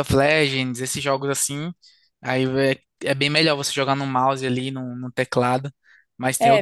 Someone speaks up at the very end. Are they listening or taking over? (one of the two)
taking over